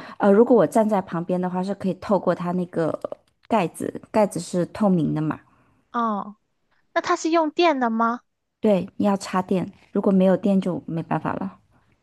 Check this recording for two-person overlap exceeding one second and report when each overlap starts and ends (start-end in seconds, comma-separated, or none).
none